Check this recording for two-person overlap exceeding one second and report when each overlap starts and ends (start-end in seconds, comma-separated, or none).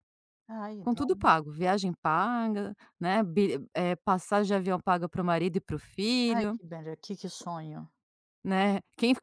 none